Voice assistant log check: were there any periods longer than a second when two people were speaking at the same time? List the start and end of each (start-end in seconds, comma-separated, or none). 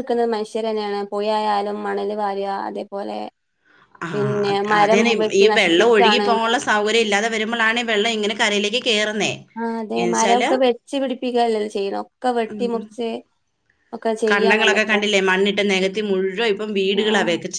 4.1-6.3